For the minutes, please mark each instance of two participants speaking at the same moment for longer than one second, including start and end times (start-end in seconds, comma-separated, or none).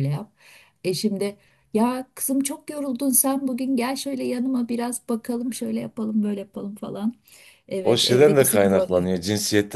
7.8-9.1